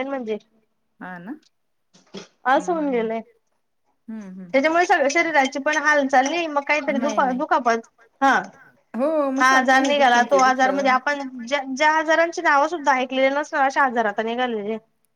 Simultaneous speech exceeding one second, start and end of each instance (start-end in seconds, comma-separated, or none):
9.4-10.9